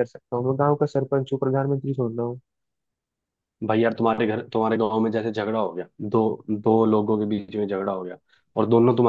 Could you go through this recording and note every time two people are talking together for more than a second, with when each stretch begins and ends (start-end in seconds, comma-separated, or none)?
none